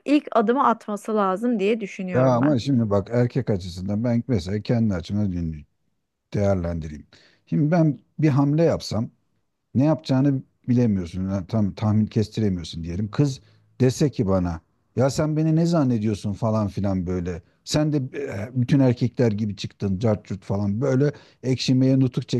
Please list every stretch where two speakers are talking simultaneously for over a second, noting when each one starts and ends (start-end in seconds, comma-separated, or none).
none